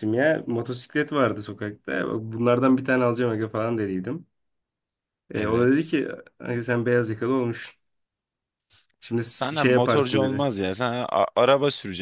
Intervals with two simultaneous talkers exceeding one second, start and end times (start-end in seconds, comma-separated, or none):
9.2-10.5